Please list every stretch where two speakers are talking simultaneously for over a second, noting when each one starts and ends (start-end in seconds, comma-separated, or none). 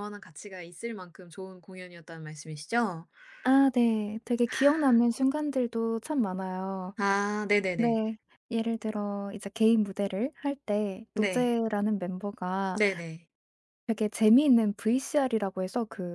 none